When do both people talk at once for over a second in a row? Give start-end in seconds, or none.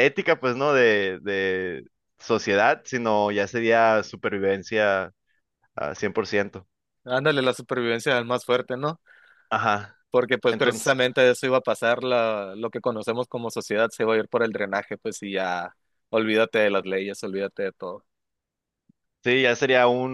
none